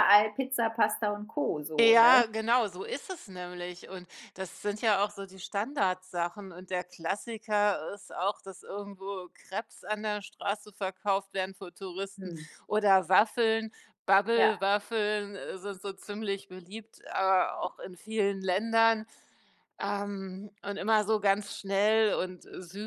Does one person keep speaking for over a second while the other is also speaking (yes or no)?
no